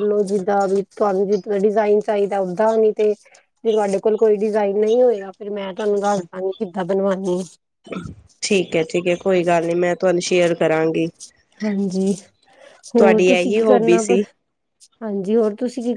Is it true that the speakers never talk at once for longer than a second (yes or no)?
no